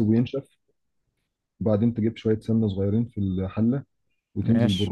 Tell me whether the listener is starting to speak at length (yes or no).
no